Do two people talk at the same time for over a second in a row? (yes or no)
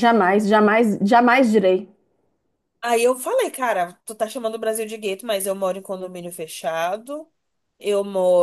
no